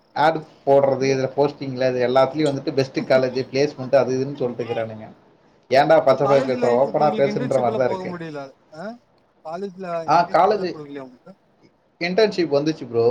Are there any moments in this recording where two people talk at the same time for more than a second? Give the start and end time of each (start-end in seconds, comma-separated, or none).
6.0-8.1